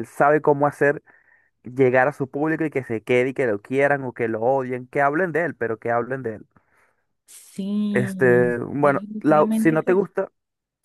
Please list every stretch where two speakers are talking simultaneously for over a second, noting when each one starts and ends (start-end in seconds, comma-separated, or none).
7.9-10.1